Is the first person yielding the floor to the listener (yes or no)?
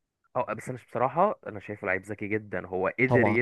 no